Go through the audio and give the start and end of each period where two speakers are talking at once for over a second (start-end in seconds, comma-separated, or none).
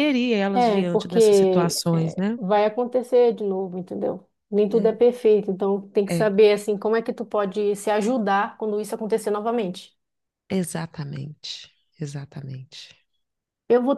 0.6-2.4